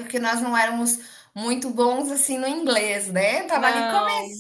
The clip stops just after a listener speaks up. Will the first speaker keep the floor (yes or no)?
yes